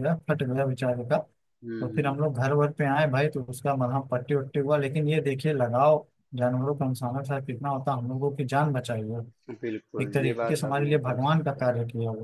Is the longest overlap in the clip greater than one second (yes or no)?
yes